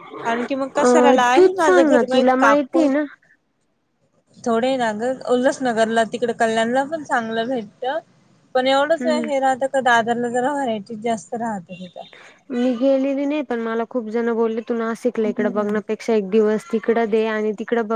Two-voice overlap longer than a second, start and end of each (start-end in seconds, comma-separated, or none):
0.9-2.9